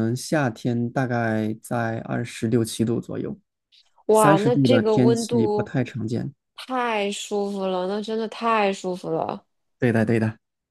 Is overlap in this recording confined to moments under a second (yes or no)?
no